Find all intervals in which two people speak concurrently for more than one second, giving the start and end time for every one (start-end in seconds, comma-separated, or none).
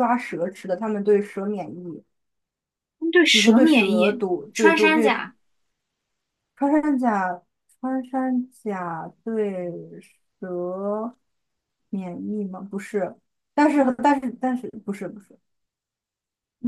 3.3-5.1